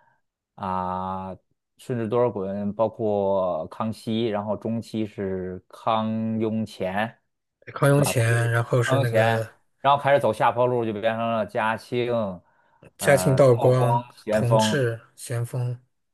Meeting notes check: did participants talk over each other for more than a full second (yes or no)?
yes